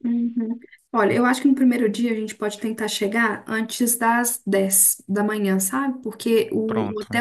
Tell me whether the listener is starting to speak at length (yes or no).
no